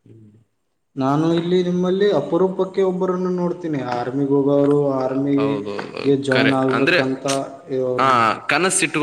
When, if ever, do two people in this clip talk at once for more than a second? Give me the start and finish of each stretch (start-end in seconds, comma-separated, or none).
5.4-7.0